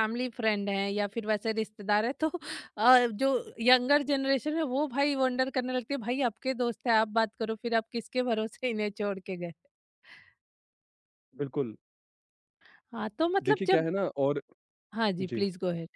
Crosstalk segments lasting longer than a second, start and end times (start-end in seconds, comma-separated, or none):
none